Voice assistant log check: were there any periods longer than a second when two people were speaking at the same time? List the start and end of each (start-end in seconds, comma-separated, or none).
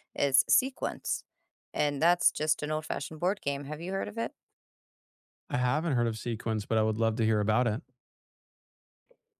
none